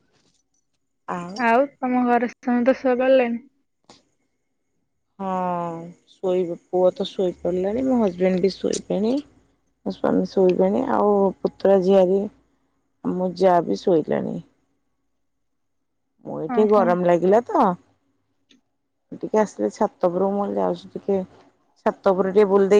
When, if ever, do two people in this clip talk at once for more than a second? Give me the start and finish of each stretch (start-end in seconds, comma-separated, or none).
none